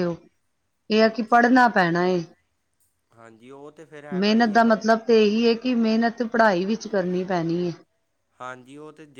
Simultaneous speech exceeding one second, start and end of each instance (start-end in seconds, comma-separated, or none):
none